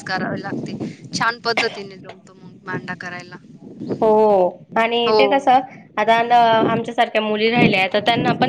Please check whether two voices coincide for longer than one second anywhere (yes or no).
no